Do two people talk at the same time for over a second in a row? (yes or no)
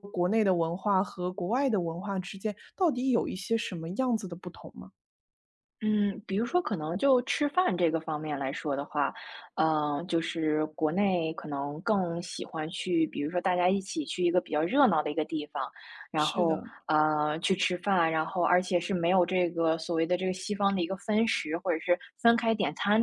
no